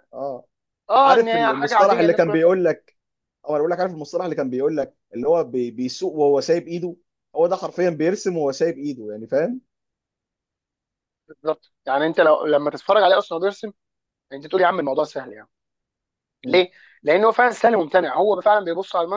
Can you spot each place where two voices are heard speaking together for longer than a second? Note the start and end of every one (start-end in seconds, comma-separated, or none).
1.0-2.6